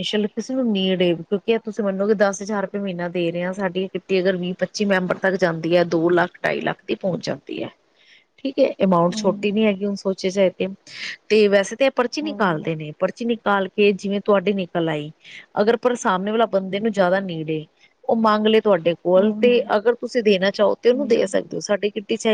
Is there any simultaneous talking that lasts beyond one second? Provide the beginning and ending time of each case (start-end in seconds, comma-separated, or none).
none